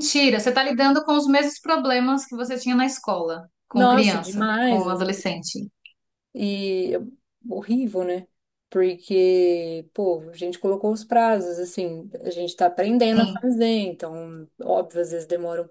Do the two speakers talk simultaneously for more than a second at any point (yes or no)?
yes